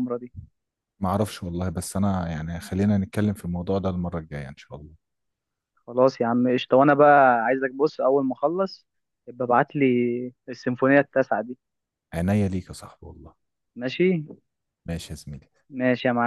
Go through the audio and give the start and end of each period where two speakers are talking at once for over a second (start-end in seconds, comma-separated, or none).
none